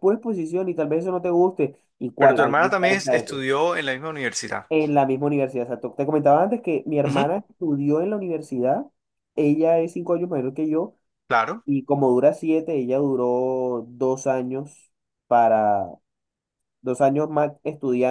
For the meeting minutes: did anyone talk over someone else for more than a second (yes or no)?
yes